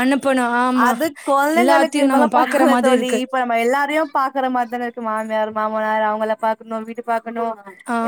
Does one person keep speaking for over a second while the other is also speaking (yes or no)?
yes